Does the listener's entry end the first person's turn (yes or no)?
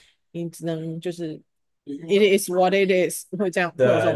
yes